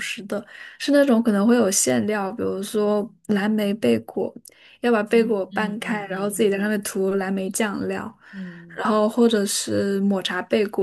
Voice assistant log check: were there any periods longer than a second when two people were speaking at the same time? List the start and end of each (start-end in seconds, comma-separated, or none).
5.0-6.6